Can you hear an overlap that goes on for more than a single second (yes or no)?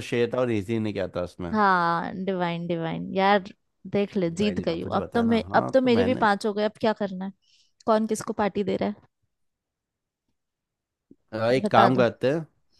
yes